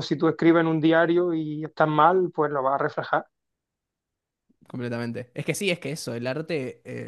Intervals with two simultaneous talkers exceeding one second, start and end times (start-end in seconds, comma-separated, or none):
none